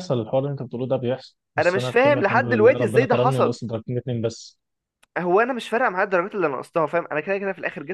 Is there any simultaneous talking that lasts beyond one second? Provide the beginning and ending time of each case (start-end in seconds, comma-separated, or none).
1.6-3.6